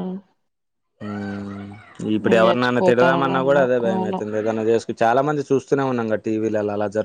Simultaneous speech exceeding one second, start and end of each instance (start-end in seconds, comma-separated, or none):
2.2-4.2